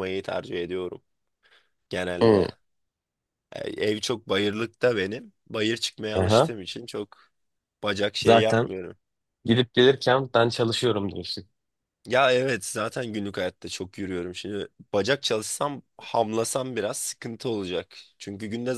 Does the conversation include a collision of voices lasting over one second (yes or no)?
no